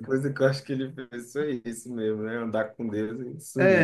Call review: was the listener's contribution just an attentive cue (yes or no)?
no